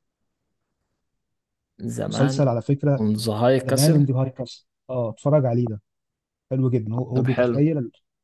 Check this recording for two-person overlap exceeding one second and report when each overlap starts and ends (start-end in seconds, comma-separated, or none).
none